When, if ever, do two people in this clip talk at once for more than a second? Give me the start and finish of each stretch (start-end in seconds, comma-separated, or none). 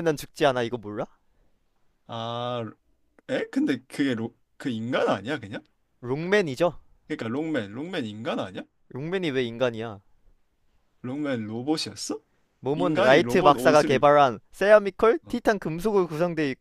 12.7-14.1